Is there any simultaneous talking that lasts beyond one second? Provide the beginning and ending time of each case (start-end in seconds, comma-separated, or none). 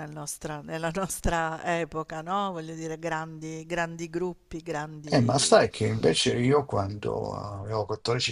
none